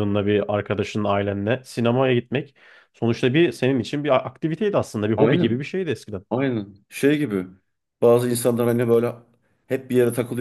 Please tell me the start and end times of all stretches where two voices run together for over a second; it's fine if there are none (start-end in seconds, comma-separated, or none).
none